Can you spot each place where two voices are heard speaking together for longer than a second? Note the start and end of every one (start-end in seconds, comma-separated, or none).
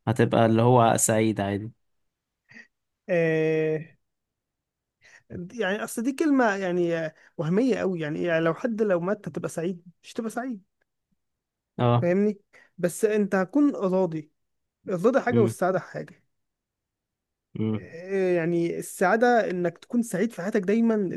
none